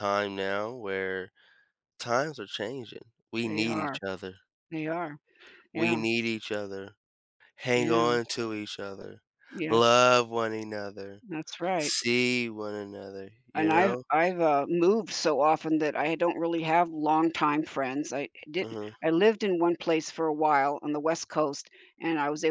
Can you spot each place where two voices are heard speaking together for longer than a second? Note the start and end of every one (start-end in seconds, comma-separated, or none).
none